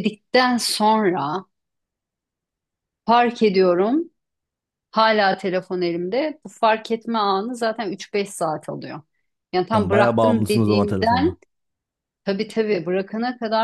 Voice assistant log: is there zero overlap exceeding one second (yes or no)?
no